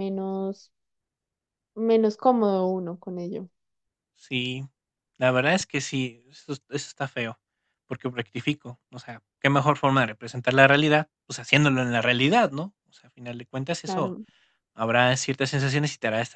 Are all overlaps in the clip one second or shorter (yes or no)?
yes